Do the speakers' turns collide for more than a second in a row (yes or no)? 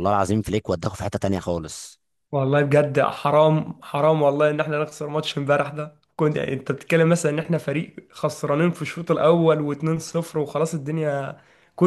no